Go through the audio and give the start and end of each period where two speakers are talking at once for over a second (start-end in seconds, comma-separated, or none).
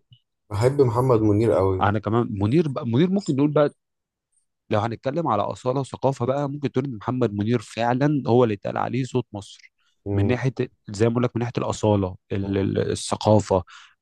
none